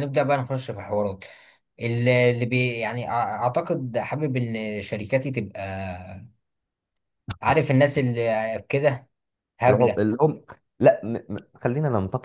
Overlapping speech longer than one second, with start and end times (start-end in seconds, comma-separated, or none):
none